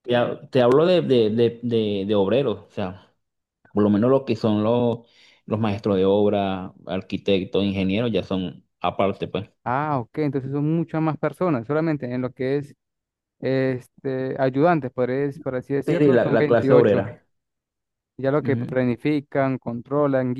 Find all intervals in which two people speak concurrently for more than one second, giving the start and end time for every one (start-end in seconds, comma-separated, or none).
15.8-17.1